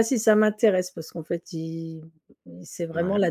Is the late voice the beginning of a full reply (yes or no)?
no